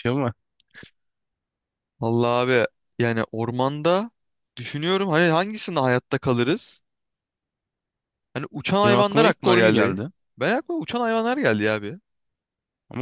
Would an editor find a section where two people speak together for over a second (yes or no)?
yes